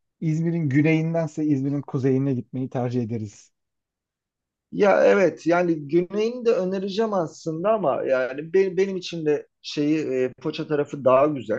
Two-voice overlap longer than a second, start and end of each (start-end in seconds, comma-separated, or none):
none